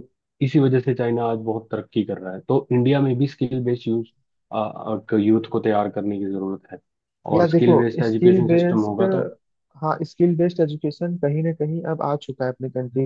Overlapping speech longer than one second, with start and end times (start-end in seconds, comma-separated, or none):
7.3-9.0